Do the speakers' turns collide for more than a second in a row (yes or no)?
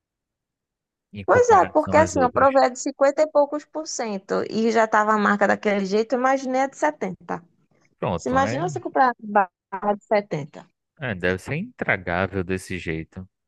yes